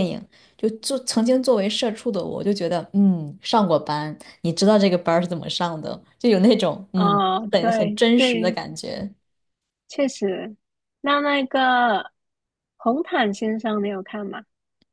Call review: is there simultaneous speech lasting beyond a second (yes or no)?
yes